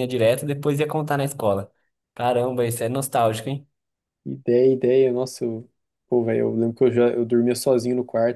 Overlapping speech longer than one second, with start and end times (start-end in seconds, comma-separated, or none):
none